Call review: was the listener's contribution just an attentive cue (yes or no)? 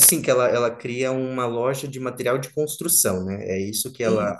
yes